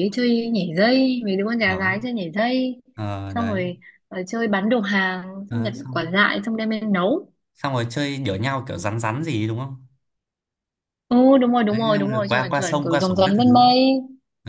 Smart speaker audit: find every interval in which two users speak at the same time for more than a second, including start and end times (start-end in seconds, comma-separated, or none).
11.7-13.7